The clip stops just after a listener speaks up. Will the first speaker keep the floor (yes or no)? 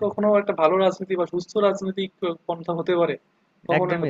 no